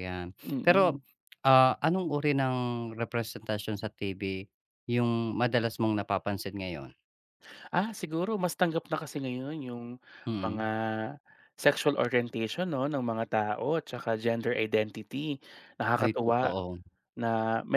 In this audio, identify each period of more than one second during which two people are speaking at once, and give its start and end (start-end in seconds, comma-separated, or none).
none